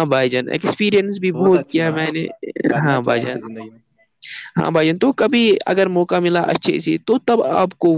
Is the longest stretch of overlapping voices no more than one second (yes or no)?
yes